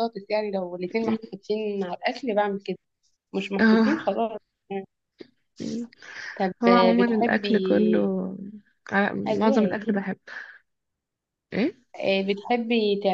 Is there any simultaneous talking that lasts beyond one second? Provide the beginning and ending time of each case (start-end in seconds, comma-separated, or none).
6.6-8.1